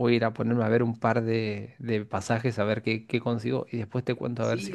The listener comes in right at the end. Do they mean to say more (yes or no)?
yes